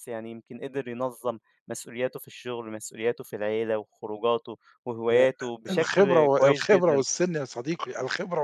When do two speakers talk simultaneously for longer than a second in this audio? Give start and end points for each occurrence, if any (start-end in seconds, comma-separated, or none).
5.1-7.0